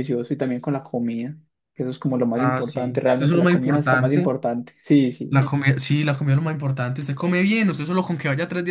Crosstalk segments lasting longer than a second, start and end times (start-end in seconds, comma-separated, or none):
2.3-4.3